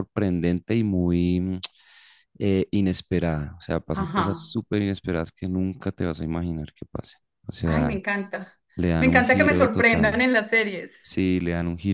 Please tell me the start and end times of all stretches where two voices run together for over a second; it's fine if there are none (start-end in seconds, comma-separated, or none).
9.0-10.3